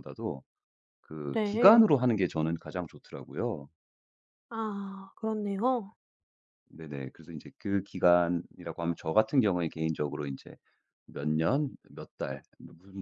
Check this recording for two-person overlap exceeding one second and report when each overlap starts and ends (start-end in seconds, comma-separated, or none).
none